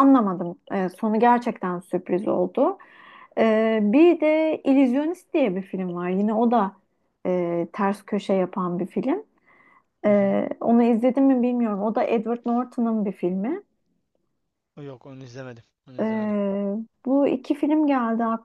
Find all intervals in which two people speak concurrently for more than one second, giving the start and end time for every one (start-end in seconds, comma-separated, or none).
none